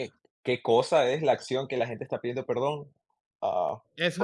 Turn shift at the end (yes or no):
no